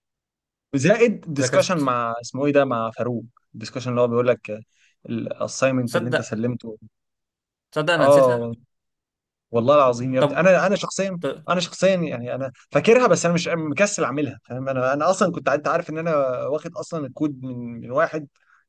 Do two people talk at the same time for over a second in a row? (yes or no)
no